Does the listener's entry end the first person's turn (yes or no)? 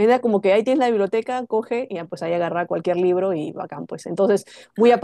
no